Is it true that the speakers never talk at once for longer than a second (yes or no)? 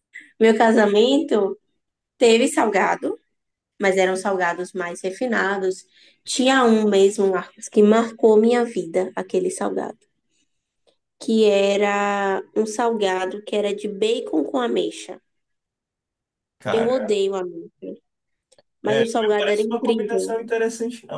no